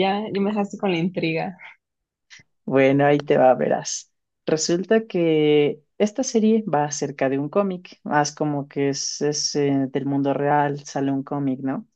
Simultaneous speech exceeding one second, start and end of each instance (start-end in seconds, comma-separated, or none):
none